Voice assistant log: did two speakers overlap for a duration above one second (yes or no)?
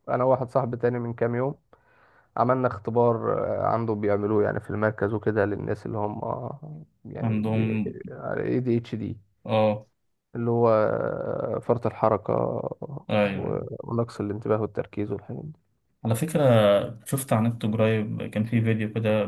no